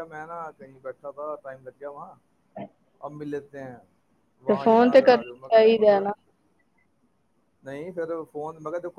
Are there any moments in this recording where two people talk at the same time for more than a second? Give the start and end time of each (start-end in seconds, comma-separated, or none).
4.5-6.1